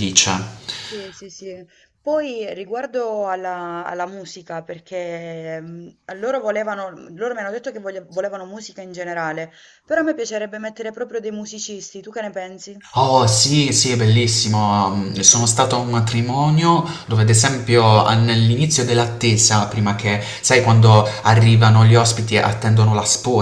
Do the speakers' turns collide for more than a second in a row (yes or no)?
no